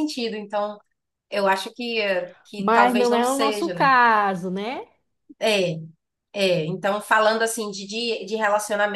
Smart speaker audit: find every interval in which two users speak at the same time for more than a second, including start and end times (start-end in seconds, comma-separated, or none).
2.6-3.9